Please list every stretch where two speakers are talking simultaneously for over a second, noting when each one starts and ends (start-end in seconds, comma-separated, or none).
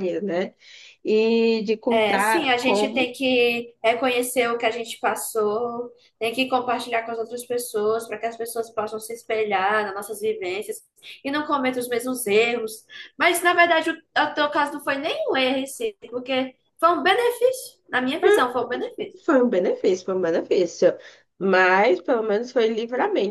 1.9-3.1